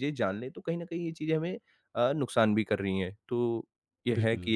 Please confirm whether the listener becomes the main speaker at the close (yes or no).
no